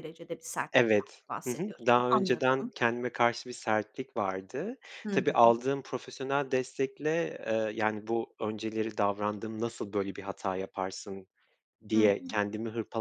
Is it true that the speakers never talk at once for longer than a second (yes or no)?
no